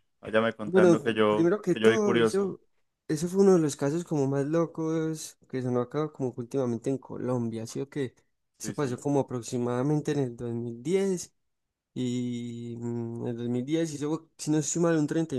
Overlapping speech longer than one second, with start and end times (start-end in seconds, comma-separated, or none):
0.7-2.5